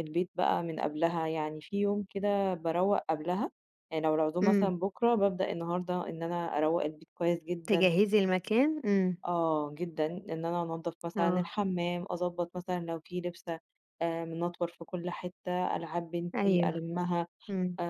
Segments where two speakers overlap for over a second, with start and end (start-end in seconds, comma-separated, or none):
none